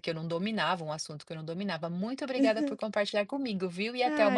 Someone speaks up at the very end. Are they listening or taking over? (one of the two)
taking over